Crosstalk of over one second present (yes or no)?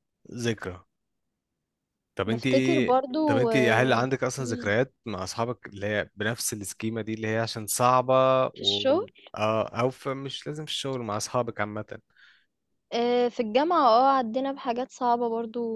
yes